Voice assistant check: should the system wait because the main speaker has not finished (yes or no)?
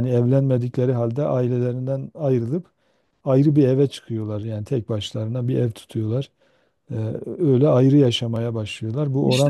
no